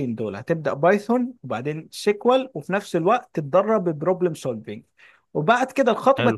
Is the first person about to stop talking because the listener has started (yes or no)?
no